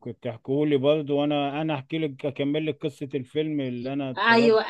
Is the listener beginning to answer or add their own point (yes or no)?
yes